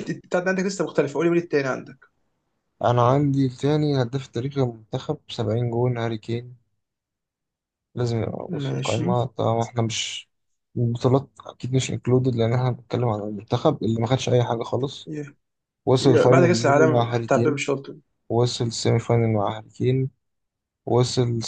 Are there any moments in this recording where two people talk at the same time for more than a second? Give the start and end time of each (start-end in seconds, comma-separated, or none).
16.0-17.6